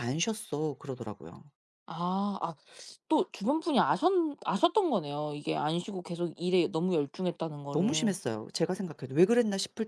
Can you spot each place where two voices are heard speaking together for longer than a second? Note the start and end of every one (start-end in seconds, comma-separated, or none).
none